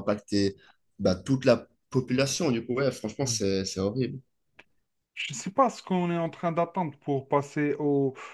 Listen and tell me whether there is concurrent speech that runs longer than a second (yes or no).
no